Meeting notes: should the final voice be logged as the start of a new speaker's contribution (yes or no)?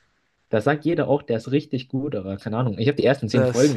no